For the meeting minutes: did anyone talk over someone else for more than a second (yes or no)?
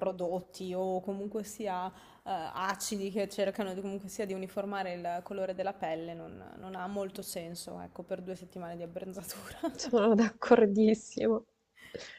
no